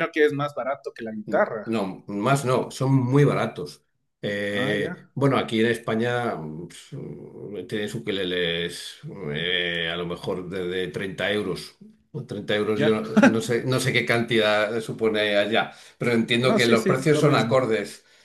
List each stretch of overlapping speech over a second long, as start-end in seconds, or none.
16.4-17.6